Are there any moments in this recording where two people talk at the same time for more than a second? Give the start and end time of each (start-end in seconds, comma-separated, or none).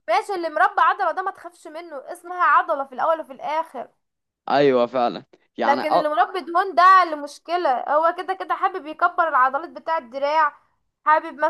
none